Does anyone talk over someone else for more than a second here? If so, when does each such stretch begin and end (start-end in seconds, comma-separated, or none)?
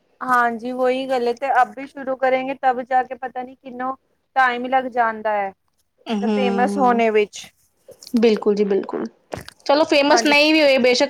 none